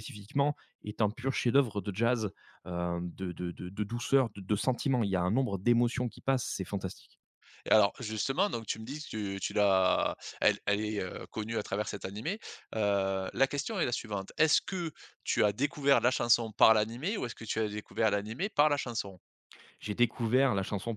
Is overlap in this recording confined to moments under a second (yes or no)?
yes